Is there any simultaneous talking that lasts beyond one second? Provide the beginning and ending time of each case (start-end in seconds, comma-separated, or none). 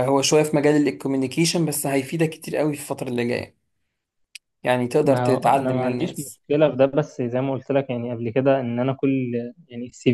5.0-6.4